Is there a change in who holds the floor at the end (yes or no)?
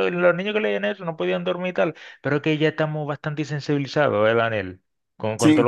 no